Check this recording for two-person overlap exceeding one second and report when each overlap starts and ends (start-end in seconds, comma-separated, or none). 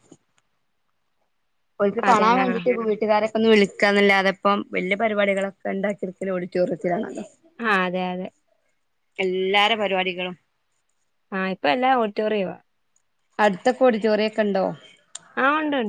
none